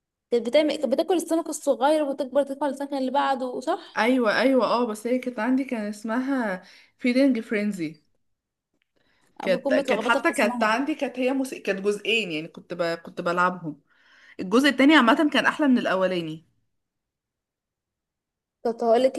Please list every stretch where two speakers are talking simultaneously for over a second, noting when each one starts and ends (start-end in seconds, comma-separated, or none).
9.4-10.7